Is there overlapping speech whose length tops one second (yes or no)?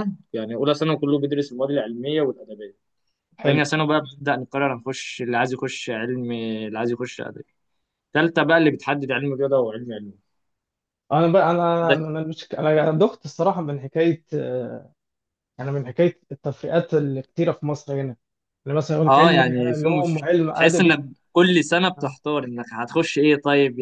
yes